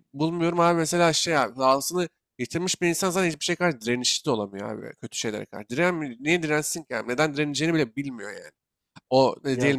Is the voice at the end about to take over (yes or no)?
no